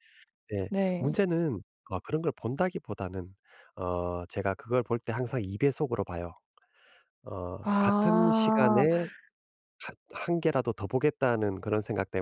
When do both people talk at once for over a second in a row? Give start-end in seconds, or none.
7.6-8.8